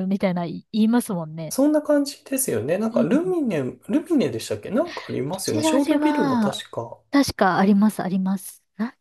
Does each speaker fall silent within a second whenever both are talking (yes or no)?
no